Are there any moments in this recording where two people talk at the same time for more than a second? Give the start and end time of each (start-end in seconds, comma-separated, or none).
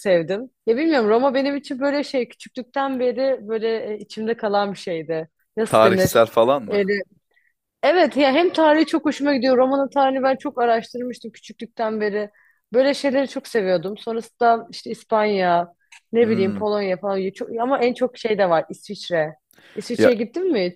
none